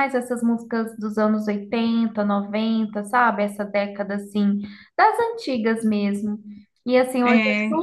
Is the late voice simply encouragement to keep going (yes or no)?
yes